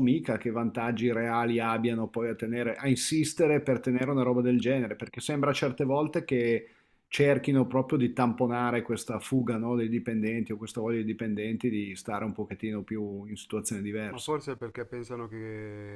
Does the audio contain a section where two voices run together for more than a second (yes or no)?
no